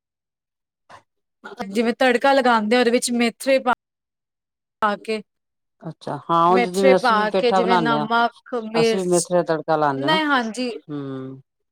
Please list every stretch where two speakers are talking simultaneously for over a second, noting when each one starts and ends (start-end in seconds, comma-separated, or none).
6.5-8.1